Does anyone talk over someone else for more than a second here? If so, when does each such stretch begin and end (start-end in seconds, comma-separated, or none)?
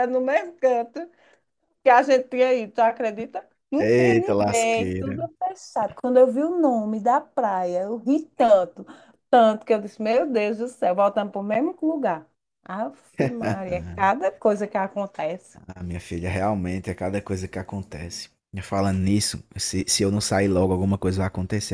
3.8-5.1